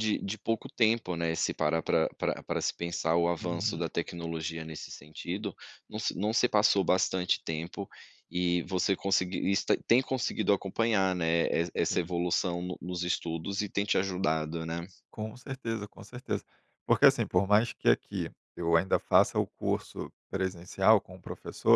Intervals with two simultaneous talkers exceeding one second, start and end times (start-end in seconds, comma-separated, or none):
none